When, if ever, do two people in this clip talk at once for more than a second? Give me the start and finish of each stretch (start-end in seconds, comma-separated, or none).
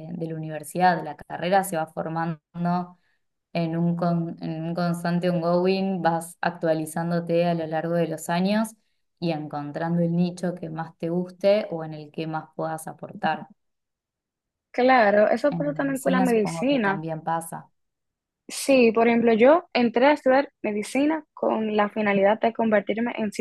15.5-17.0